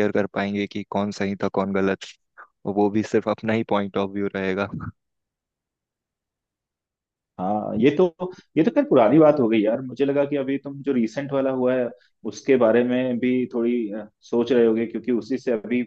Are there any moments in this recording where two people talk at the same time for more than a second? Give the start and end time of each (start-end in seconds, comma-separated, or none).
none